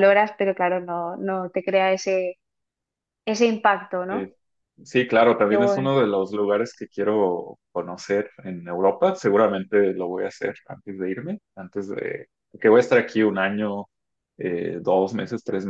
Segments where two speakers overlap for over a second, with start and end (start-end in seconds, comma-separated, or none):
none